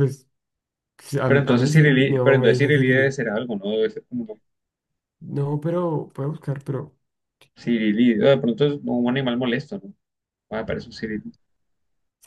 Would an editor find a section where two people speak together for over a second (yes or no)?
yes